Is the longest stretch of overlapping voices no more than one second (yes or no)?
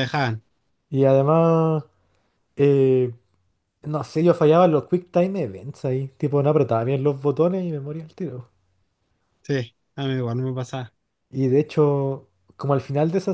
yes